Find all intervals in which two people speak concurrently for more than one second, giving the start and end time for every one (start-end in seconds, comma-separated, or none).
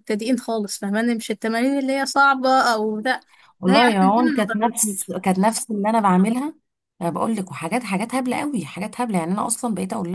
3.7-5.1